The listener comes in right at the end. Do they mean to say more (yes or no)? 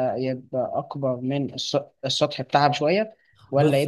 no